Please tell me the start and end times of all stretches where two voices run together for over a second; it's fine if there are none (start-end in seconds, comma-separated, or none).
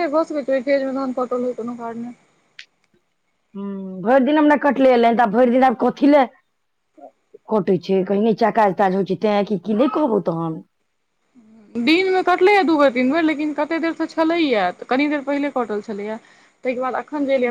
none